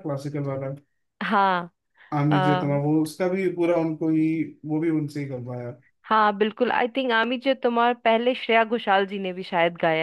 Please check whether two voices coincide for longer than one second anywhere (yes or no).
no